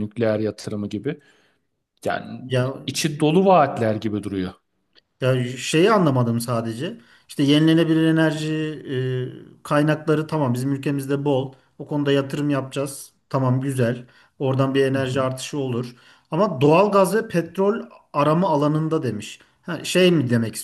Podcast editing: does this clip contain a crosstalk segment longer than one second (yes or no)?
no